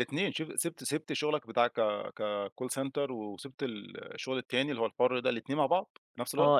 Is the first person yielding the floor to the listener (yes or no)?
yes